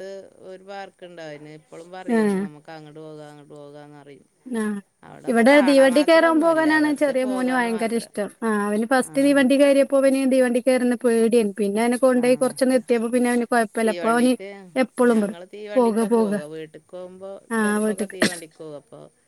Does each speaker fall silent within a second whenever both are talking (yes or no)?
no